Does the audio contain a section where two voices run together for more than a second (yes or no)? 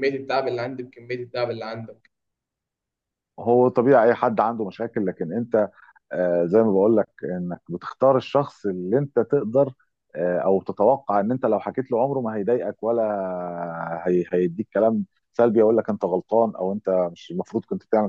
no